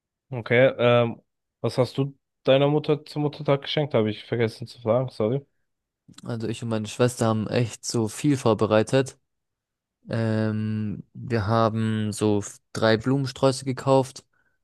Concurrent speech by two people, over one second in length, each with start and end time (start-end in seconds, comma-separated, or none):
none